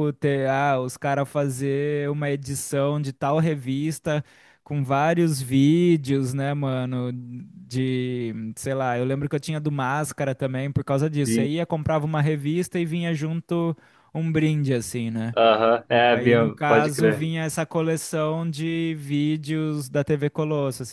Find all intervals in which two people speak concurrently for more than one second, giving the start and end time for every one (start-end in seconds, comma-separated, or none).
15.9-17.3